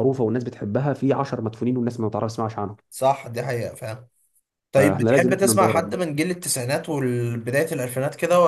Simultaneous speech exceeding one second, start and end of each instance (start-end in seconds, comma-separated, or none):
4.7-6.0